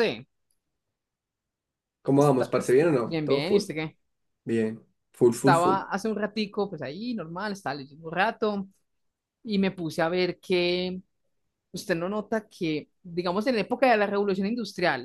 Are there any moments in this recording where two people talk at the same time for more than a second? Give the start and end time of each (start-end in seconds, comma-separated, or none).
2.2-3.6